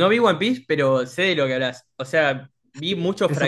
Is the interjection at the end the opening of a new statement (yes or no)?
no